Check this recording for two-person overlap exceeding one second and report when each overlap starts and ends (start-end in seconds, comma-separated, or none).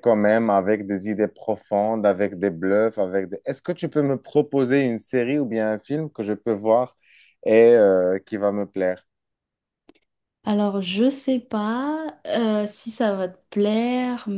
none